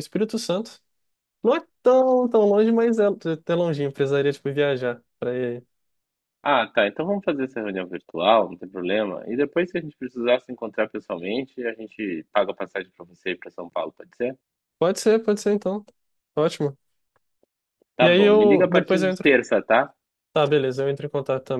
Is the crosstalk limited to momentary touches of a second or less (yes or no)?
no